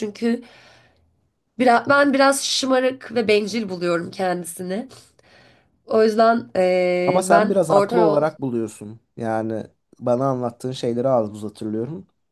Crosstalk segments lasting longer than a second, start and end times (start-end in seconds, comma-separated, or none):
7.0-8.3